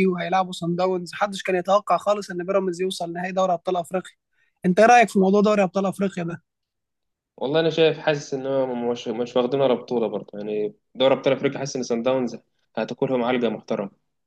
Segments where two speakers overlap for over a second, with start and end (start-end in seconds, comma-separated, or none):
none